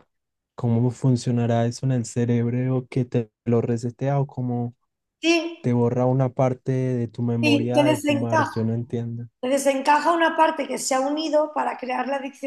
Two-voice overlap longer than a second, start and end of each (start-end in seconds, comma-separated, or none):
7.4-8.7